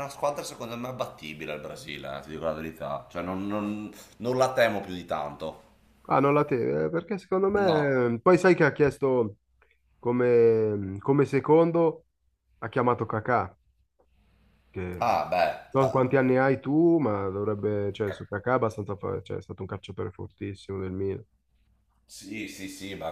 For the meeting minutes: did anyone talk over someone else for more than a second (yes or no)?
no